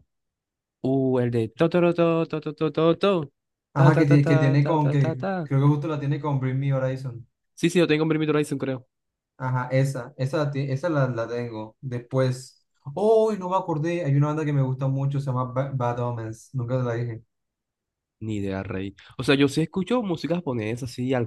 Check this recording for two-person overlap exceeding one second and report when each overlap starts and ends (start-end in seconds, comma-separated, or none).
3.7-5.5